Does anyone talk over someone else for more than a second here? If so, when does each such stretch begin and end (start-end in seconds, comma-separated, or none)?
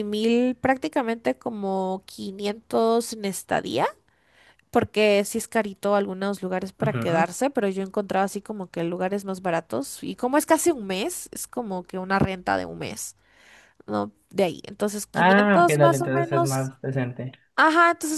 15.1-16.7